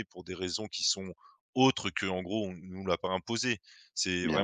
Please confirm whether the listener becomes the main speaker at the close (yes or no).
no